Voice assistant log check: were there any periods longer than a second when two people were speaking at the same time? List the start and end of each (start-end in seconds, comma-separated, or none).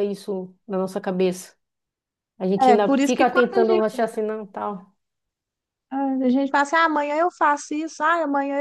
2.6-4.1